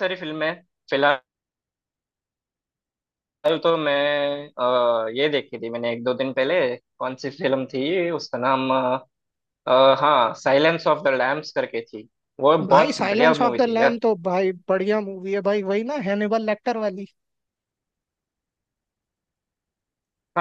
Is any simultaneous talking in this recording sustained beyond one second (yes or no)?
yes